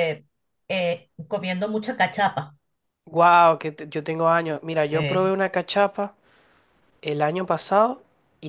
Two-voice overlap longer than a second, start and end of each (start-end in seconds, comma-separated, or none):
none